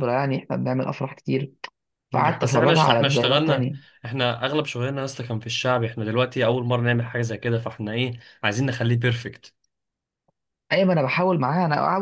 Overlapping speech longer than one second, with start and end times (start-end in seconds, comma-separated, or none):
2.4-3.8